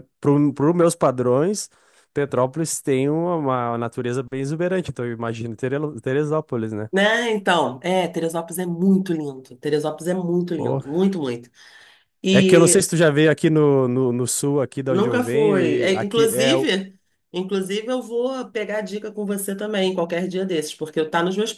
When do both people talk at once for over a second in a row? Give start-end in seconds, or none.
14.9-16.5